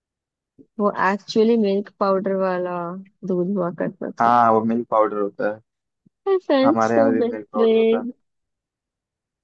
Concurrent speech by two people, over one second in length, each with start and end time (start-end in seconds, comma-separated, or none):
6.7-8.1